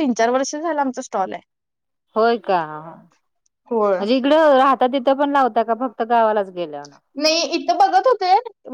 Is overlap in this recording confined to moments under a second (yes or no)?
yes